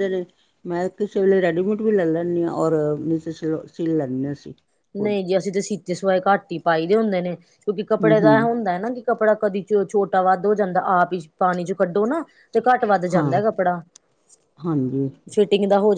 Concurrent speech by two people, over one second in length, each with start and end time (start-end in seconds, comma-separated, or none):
none